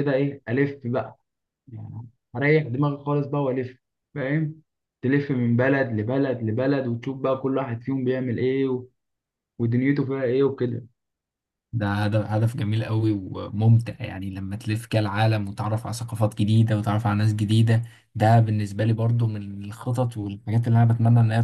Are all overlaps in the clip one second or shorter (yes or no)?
yes